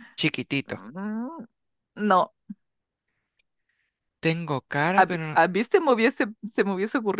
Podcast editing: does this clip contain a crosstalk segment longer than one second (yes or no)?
no